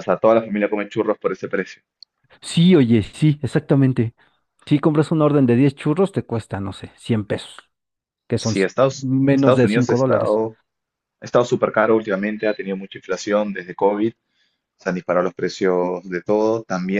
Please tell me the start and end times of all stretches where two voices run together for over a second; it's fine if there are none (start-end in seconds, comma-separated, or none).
8.3-10.4